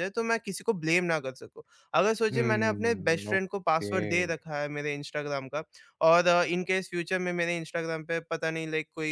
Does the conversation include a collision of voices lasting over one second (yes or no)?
yes